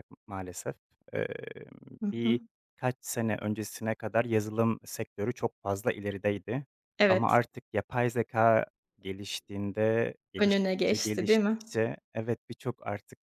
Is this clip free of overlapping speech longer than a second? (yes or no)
no